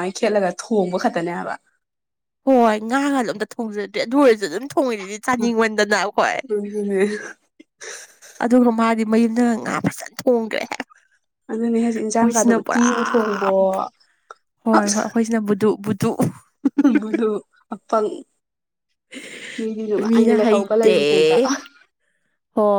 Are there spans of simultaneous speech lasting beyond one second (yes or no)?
yes